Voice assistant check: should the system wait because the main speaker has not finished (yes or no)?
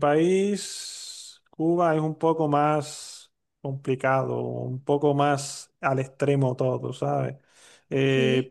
yes